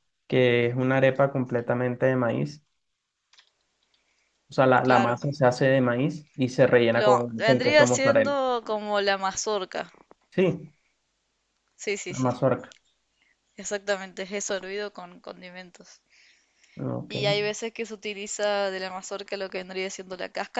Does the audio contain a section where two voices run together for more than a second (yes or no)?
yes